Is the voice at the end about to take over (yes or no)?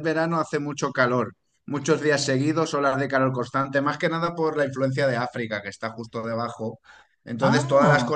no